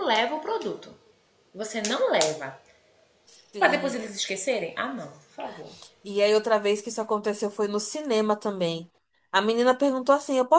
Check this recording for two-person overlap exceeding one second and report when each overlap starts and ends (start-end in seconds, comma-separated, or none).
none